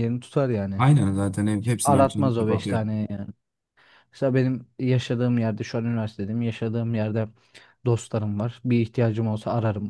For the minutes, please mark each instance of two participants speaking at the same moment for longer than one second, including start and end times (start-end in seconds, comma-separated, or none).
1.6-2.8